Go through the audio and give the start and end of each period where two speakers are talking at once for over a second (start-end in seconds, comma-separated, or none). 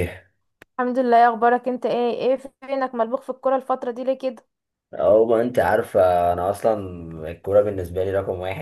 none